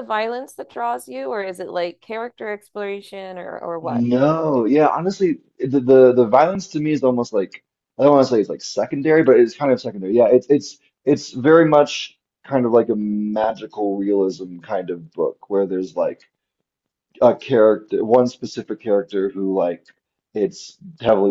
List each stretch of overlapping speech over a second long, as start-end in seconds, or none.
none